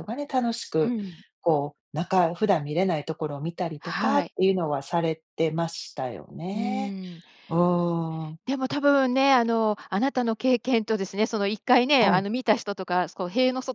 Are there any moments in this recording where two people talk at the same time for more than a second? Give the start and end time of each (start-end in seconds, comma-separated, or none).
none